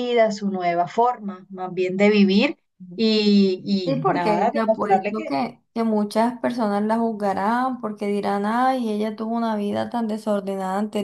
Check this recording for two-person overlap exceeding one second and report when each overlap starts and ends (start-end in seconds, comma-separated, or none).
3.8-5.4